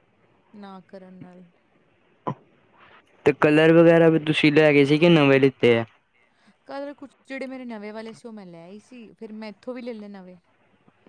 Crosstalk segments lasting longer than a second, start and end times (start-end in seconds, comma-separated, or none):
none